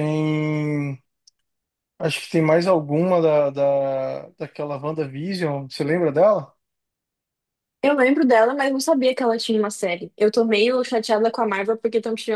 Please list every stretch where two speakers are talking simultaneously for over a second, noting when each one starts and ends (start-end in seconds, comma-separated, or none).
none